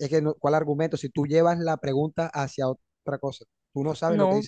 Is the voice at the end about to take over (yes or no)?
no